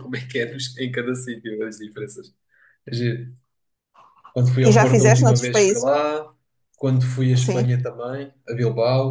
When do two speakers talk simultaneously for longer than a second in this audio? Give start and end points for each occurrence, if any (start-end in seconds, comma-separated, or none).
4.6-5.9